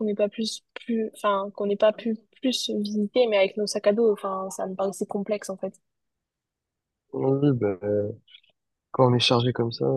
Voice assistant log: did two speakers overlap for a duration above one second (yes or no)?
no